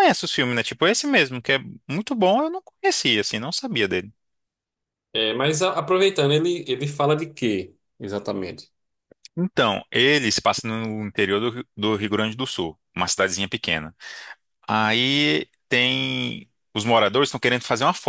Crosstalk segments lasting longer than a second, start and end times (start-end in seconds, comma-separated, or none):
none